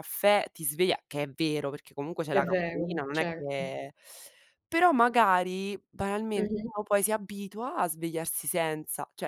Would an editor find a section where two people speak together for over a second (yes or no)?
yes